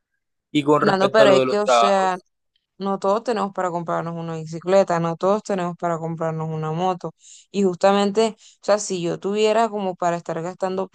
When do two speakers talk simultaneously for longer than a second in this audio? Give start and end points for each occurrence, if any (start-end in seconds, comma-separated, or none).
0.8-2.1